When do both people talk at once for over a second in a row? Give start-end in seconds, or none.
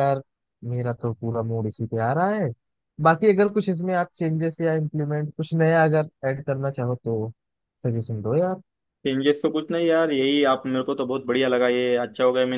none